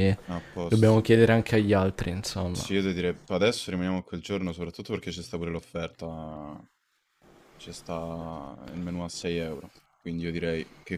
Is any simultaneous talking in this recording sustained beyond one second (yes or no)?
no